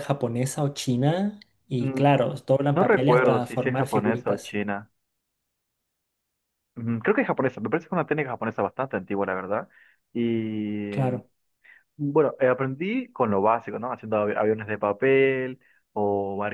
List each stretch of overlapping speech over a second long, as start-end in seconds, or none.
2.8-4.6